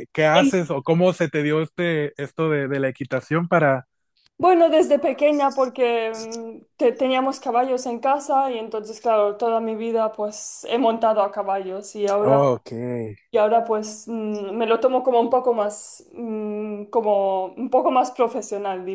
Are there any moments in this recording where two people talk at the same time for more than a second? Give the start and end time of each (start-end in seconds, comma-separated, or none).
none